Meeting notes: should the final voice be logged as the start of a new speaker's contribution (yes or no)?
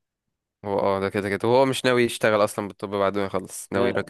yes